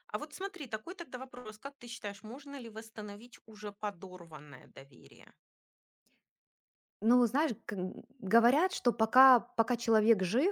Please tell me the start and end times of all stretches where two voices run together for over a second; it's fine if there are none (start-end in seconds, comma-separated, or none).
none